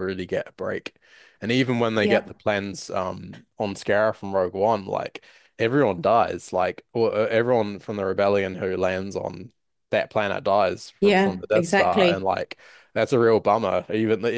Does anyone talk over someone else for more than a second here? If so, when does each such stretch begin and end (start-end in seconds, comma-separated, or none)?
11.0-12.3